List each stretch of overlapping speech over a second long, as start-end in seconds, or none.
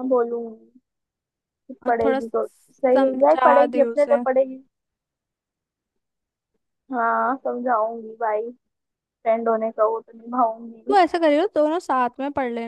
1.9-4.2